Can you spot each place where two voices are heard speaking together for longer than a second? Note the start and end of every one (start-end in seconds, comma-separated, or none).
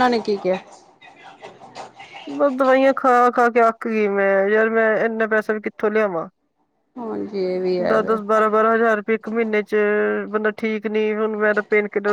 none